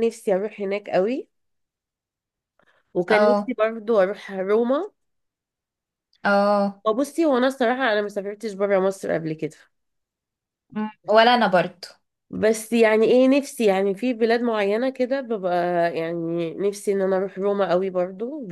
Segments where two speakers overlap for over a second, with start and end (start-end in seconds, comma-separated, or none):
none